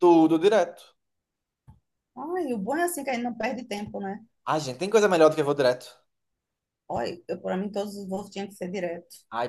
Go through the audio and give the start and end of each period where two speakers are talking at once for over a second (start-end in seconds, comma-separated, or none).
none